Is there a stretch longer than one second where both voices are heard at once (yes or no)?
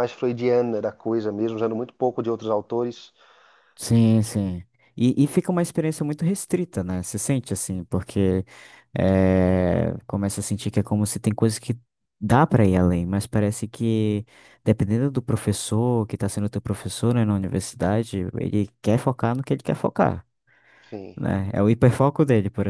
no